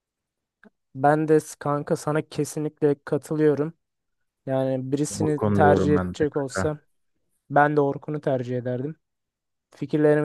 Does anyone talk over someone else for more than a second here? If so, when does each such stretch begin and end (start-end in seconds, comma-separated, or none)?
5.1-6.8